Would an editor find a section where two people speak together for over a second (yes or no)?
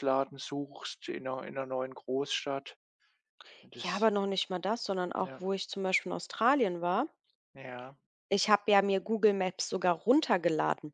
no